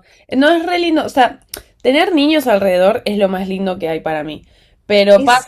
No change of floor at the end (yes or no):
yes